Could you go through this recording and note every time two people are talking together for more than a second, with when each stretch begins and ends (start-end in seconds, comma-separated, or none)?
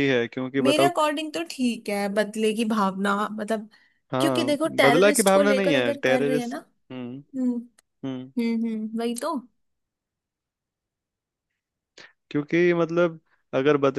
4.2-6.6